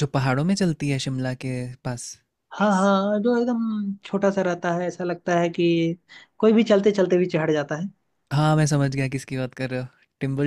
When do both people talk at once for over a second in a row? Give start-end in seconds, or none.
none